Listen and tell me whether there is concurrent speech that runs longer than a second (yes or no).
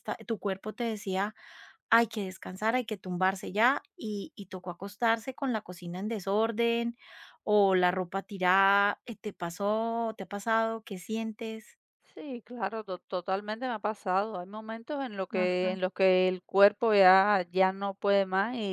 no